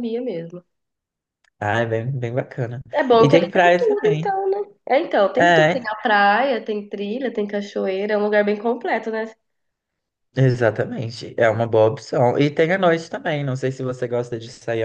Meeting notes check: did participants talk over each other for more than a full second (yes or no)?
yes